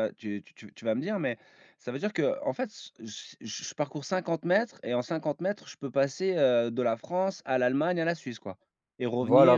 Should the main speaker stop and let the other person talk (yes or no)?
yes